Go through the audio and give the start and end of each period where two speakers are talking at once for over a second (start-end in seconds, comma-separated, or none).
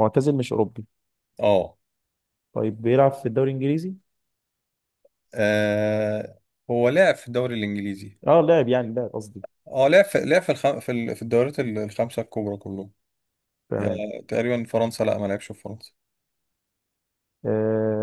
none